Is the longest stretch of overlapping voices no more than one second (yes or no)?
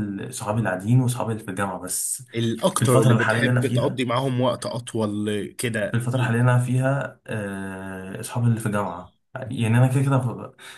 no